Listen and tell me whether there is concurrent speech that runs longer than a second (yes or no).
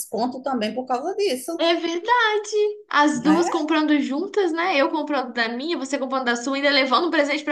no